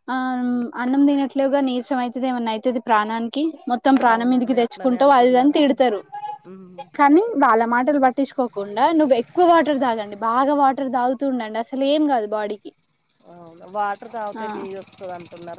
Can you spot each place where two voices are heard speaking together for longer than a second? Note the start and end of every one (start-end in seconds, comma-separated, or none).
4.1-5.8